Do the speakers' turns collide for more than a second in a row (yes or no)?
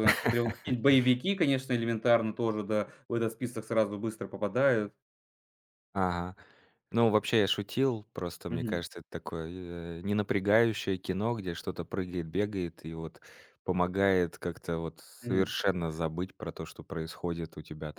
no